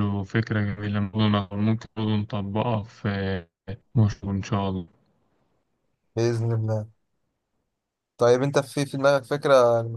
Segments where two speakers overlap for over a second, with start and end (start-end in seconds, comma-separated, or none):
none